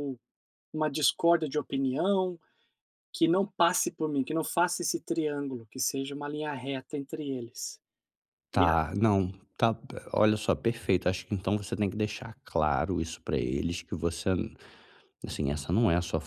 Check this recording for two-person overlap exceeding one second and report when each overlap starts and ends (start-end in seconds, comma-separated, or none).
none